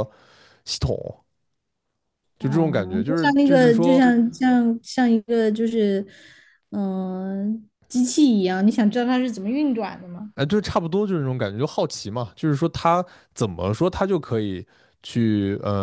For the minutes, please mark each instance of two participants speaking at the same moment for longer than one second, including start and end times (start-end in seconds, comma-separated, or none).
2.4-4.0